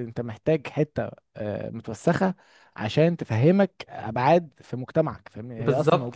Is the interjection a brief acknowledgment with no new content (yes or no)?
no